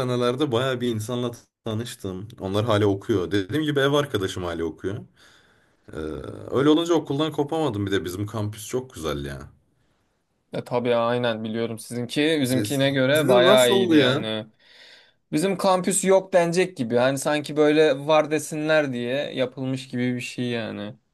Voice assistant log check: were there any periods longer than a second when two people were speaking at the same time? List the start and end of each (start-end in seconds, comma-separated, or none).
12.4-14.3